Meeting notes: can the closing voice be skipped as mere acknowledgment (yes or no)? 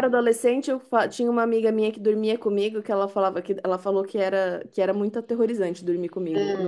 no